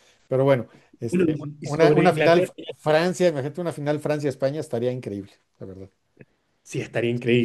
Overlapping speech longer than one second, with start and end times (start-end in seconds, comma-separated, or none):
1.1-2.5